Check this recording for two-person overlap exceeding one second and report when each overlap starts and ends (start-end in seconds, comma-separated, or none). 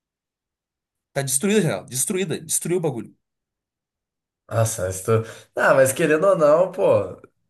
none